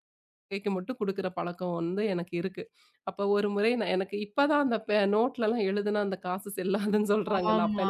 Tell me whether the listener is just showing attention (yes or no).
yes